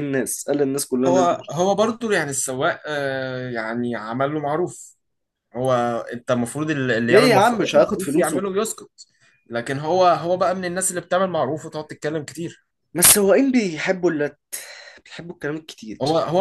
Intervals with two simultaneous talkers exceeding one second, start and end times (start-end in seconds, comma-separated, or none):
7.1-8.4